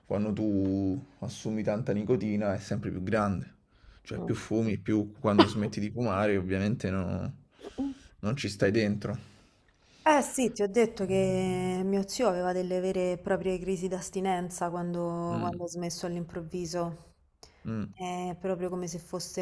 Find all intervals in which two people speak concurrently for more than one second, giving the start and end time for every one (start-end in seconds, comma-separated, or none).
none